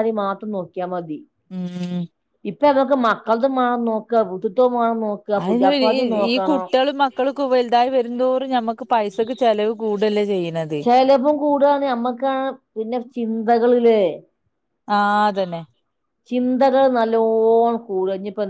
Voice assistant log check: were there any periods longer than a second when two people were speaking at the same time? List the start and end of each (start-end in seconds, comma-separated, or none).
none